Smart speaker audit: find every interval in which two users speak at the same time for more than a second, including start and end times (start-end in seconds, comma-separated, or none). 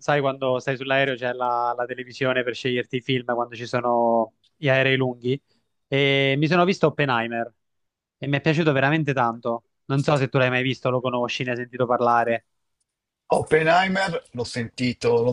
none